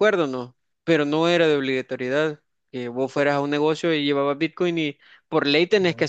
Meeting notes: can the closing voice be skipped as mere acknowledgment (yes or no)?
yes